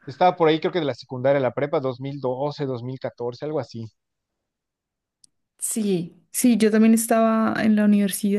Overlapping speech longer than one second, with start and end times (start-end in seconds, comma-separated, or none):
none